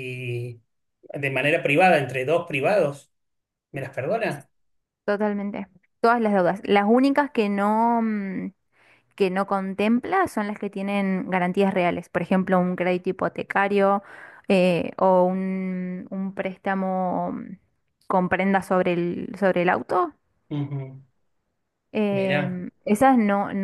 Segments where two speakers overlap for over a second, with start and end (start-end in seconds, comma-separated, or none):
none